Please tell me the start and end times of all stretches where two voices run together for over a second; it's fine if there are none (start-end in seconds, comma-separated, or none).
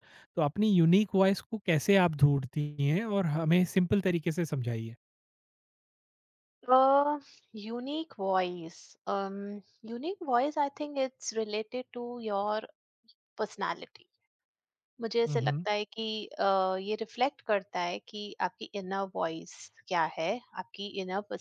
none